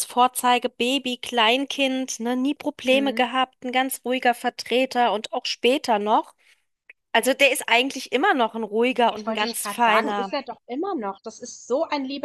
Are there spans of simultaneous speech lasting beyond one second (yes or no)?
yes